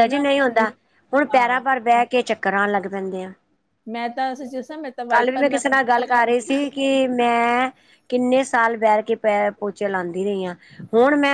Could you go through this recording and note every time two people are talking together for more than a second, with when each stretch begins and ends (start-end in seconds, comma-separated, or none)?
5.1-6.6